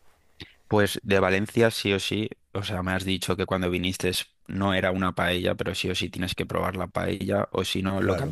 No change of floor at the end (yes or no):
yes